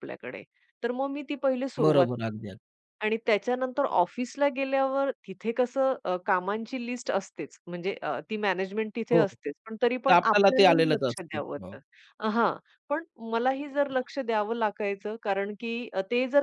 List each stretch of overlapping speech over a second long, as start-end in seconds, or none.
10.1-11.7